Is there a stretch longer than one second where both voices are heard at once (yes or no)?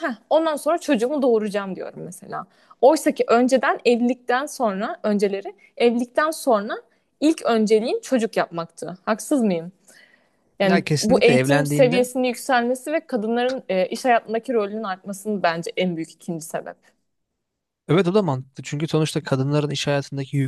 yes